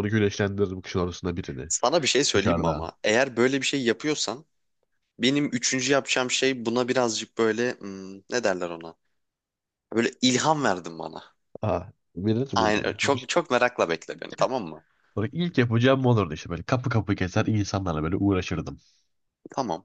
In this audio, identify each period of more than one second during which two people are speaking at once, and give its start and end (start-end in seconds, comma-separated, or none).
none